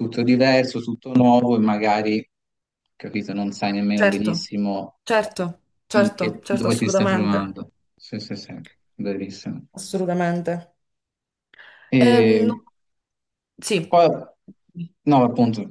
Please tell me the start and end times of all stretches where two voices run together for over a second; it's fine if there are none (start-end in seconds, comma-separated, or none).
5.9-7.4